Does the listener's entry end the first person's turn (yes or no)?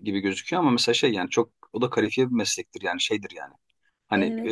no